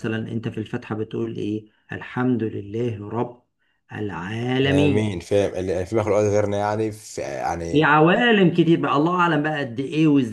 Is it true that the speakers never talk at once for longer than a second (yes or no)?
yes